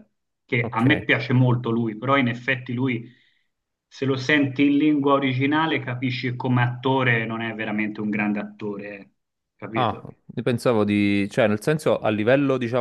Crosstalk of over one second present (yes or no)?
no